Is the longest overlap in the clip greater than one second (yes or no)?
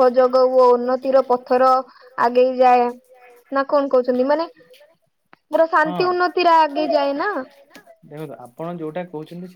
no